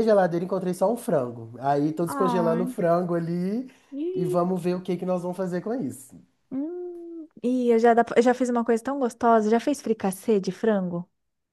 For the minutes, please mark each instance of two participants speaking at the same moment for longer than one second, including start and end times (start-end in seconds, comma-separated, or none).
none